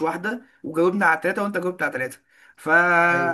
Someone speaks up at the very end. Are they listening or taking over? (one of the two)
listening